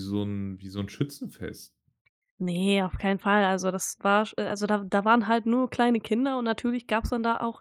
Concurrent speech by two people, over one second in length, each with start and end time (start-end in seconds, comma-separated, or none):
none